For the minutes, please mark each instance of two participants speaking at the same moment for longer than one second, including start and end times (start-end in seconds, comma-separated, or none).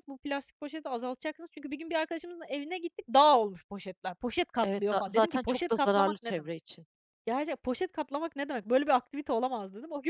4.6-6.5